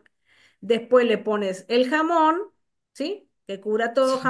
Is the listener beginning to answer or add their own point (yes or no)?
no